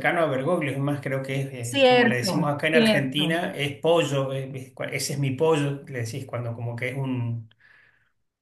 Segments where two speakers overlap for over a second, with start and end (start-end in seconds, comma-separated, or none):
1.6-3.5